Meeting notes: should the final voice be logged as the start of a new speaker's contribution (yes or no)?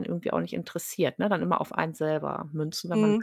yes